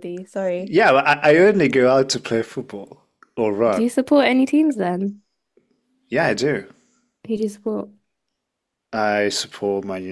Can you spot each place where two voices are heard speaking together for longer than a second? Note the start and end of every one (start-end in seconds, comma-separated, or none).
none